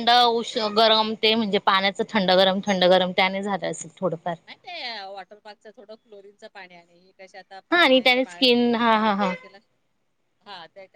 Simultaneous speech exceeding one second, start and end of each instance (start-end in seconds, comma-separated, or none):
7.7-9.3